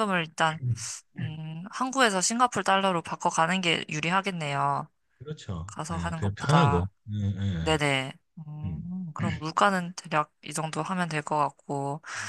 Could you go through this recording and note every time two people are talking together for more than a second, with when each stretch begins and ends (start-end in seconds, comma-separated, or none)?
5.7-6.9